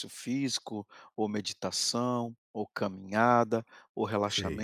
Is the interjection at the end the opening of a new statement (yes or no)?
no